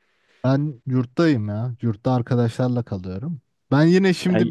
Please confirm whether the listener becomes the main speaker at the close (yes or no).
no